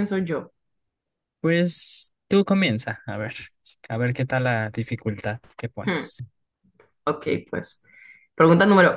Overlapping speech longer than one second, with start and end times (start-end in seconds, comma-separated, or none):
none